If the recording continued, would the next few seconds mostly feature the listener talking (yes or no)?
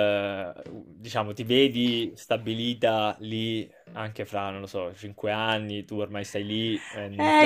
yes